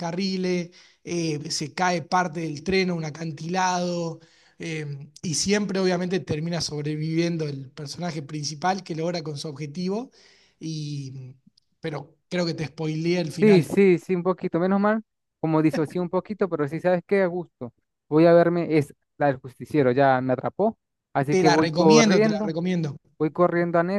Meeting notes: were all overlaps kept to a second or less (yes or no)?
no